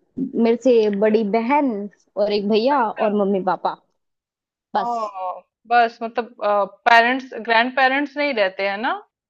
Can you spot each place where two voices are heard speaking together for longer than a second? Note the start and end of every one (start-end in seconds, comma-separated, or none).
none